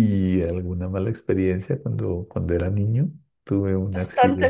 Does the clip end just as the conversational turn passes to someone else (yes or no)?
yes